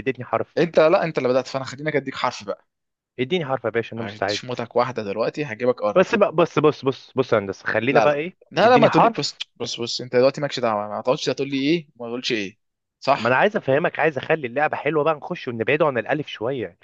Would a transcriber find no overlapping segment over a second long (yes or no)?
no